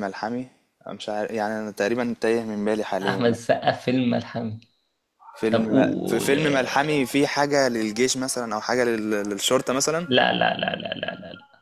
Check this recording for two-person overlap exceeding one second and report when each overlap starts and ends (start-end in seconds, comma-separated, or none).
5.5-7.0